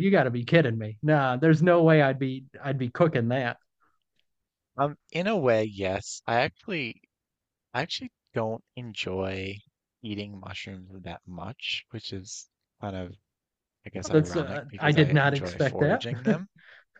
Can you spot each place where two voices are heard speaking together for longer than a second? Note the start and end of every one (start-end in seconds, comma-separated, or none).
14.1-16.0